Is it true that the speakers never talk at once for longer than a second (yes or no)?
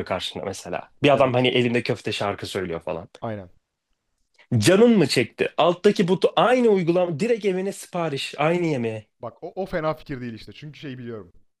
yes